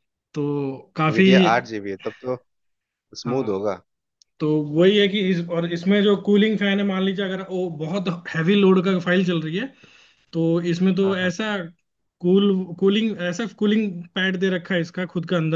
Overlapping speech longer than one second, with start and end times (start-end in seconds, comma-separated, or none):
none